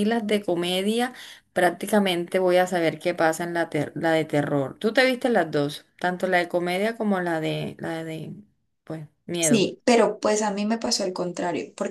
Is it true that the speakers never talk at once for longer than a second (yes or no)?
yes